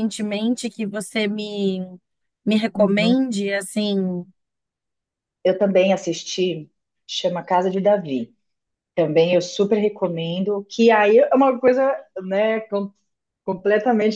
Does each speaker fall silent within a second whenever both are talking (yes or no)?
yes